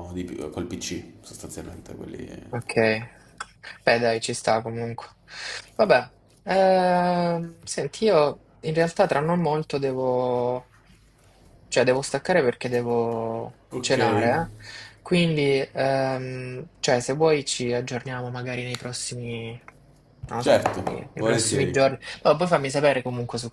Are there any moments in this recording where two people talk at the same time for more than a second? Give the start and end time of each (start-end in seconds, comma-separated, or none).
20.4-21.9